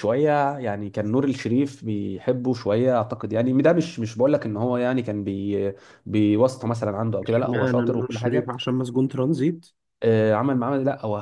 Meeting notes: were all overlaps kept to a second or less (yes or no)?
no